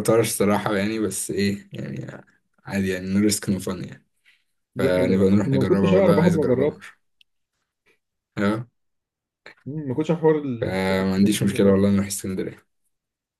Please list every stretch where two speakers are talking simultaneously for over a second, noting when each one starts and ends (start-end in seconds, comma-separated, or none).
4.8-6.8, 10.6-11.9